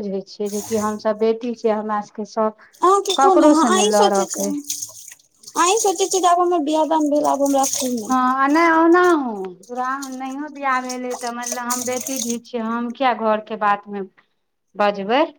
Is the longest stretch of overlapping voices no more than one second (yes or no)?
yes